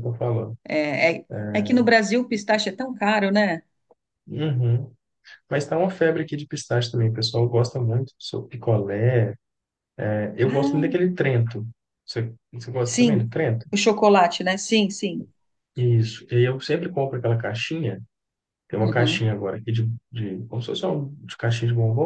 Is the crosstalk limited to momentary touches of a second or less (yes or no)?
yes